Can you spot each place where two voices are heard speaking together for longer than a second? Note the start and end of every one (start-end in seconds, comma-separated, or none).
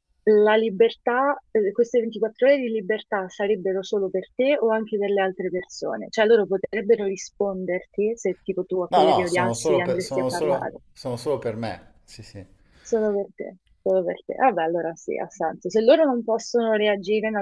8.9-10.8